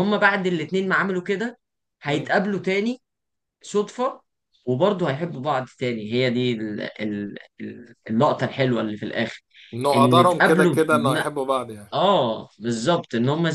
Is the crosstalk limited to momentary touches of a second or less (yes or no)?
no